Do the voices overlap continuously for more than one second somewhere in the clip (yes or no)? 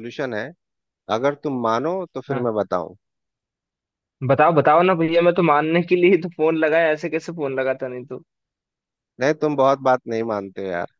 no